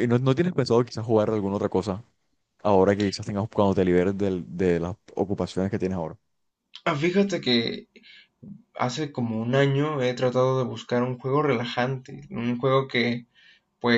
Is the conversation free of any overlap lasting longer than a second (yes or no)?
yes